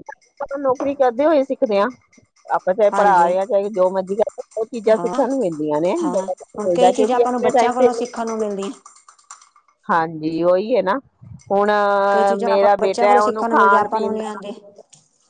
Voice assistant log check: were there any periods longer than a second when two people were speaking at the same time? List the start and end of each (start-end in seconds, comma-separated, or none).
12.4-14.3